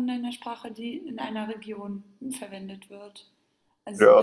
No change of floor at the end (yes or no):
no